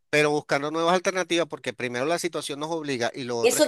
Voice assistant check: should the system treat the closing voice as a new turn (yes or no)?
yes